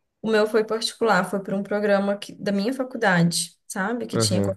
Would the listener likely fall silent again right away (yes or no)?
no